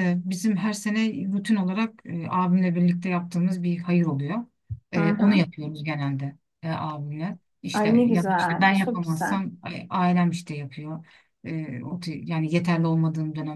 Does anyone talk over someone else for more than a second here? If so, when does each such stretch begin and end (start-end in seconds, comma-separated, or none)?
7.7-9.4